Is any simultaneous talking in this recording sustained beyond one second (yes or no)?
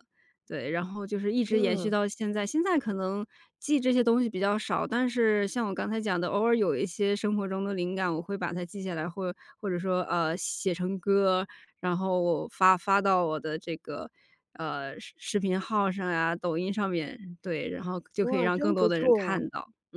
yes